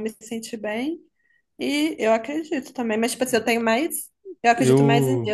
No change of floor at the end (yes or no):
yes